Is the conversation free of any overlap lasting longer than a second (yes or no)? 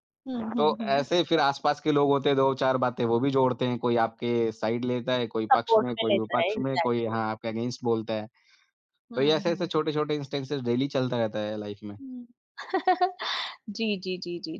no